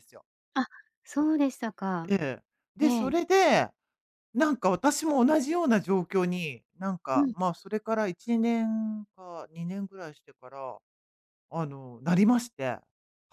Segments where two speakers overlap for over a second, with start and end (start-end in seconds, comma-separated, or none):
none